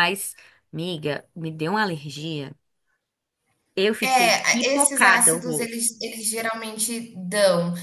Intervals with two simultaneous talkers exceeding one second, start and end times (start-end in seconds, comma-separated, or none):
4.0-5.8